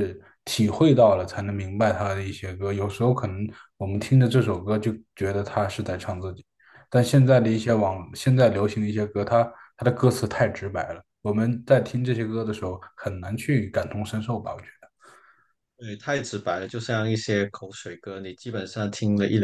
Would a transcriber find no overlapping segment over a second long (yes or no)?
yes